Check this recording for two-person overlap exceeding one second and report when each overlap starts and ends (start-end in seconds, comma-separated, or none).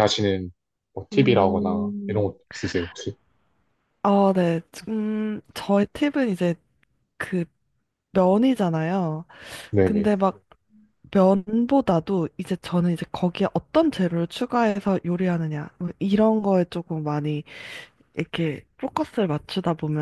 1.1-2.3